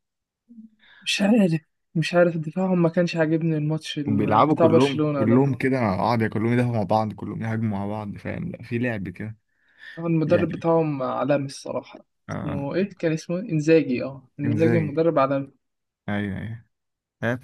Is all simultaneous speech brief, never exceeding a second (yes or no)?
no